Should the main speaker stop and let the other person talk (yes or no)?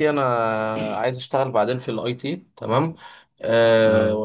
no